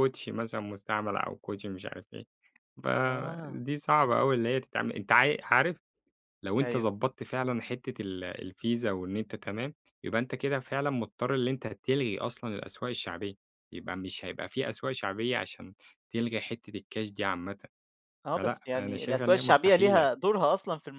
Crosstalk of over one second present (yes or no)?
yes